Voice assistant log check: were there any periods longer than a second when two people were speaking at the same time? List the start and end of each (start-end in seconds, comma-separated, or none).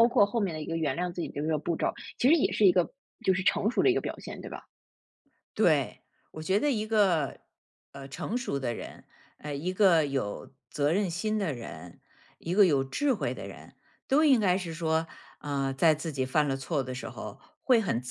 none